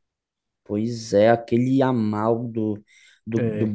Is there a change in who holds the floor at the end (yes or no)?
no